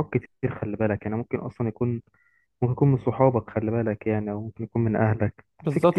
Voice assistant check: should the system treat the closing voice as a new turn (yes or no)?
yes